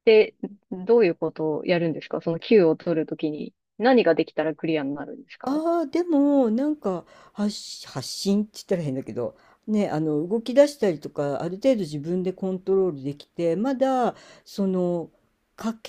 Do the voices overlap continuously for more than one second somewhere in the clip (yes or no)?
no